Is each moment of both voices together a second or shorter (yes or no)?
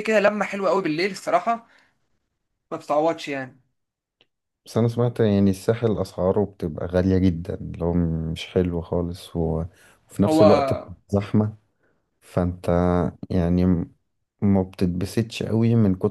yes